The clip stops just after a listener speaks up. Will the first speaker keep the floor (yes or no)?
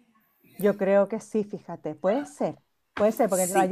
yes